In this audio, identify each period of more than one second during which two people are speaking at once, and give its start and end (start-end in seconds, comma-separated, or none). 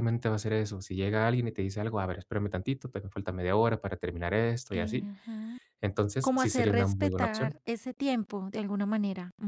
6.2-7.6